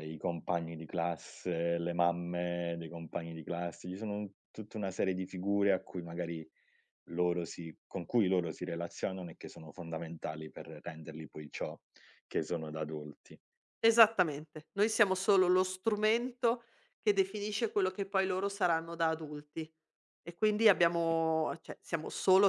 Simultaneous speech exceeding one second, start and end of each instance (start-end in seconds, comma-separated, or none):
none